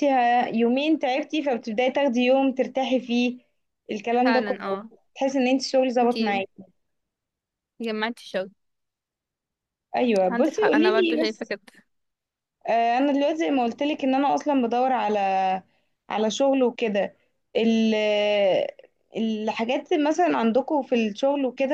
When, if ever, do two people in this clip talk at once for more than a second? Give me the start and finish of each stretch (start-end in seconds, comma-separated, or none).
10.3-11.5